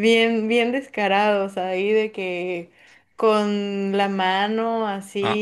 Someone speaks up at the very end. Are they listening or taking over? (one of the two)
listening